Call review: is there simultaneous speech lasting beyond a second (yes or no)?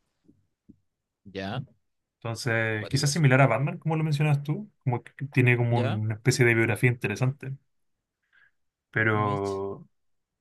no